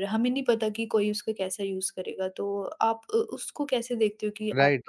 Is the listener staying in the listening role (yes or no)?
no